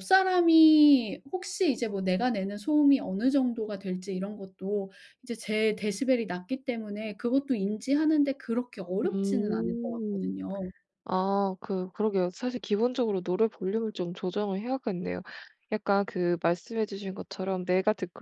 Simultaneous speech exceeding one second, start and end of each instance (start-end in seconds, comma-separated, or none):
9.0-10.3